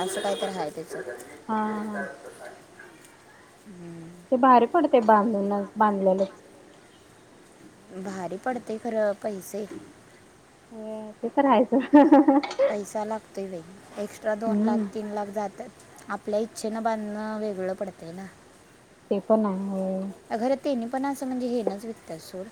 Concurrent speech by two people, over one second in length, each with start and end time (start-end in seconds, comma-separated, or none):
none